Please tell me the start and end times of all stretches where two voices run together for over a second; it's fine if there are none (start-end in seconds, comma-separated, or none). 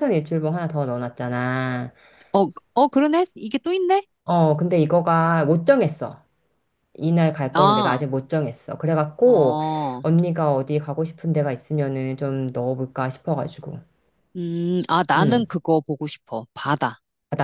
none